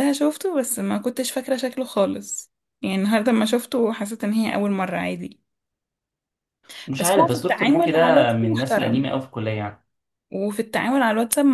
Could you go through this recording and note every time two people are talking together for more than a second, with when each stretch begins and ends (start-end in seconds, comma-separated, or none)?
7.0-9.1